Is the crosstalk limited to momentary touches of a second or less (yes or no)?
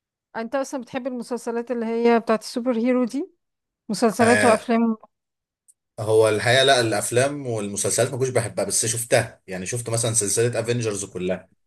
yes